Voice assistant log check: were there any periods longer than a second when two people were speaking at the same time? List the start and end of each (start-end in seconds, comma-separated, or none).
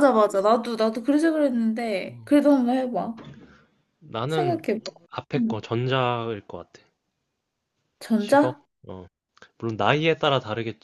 none